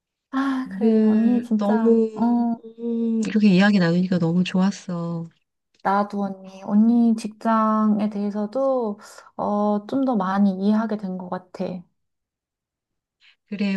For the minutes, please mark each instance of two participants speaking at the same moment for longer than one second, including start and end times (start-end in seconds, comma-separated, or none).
0.7-2.6